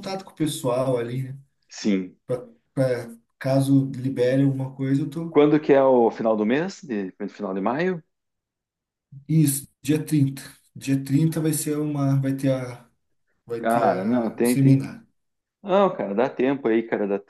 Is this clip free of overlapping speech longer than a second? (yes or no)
no